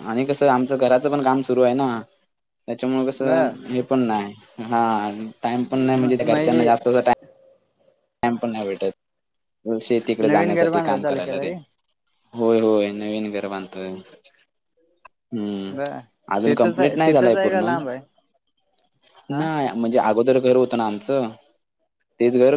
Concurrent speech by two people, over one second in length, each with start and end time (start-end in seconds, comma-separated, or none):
10.3-11.5, 16.4-17.7